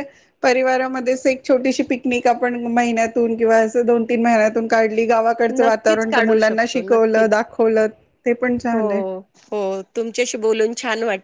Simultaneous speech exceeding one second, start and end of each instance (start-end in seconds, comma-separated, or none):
5.6-7.4